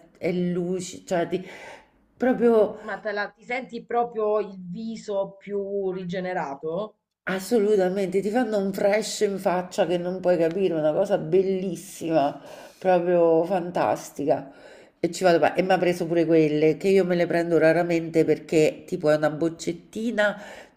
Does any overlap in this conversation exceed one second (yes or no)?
no